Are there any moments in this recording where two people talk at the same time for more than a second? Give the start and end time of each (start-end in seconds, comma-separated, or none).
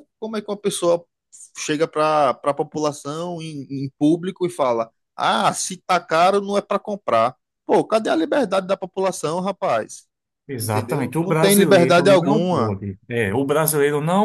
10.6-12.8